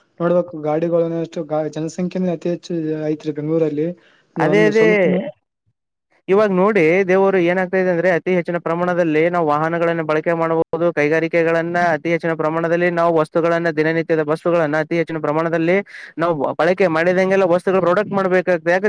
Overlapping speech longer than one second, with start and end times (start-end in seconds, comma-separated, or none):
none